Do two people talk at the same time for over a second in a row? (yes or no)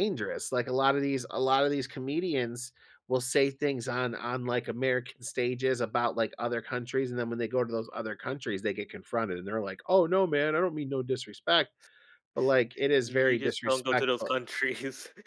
yes